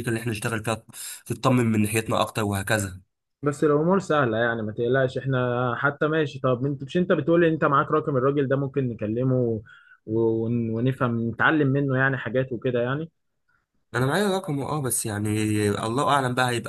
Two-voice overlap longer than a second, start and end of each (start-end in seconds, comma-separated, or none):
none